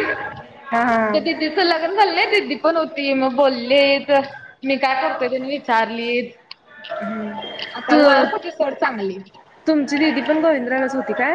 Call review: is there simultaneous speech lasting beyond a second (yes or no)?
no